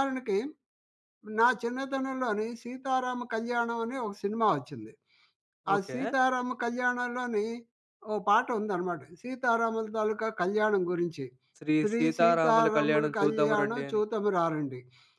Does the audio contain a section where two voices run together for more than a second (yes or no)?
yes